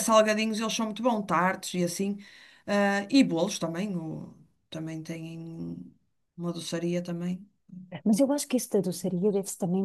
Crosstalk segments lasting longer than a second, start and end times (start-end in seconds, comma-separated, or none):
none